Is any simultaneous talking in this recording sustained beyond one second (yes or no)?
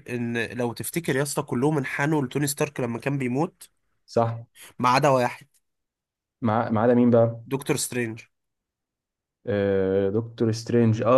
no